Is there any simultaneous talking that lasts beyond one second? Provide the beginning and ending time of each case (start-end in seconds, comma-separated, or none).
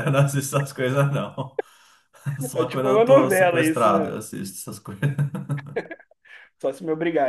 2.5-4.2